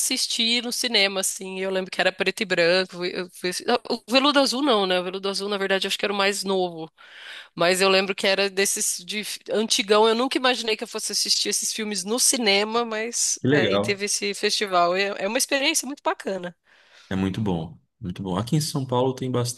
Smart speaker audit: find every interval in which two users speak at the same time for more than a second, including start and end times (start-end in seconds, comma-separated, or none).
none